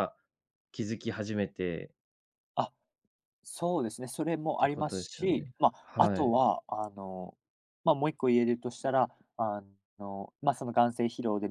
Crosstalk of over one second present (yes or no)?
yes